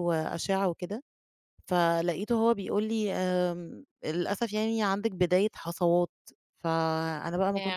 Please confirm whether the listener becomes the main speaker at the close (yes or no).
no